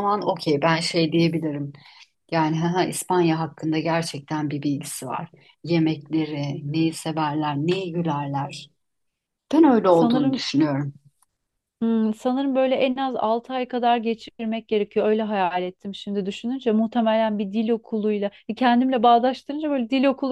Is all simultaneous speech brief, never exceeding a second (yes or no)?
yes